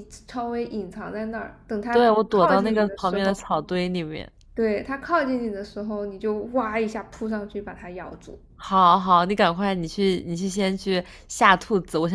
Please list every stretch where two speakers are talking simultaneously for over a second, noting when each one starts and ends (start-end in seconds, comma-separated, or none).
1.9-3.4